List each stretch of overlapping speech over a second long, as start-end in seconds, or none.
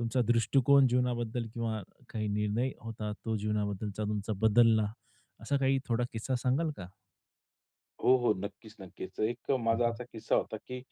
none